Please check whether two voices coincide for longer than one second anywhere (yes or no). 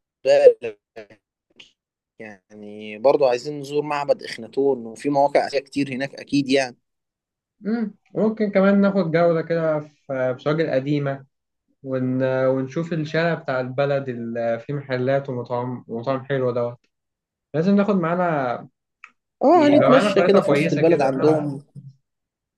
yes